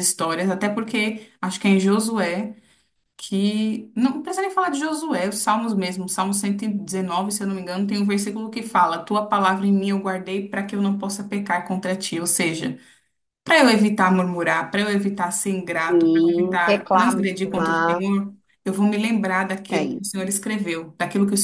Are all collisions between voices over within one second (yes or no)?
no